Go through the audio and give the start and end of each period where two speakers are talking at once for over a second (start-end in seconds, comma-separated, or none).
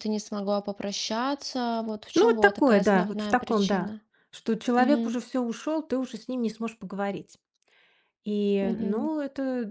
2.1-3.9